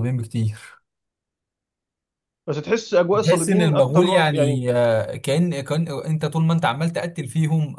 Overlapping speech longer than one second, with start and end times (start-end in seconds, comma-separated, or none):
3.1-4.6